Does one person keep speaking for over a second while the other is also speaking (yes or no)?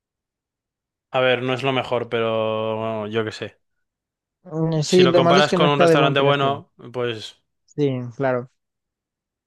yes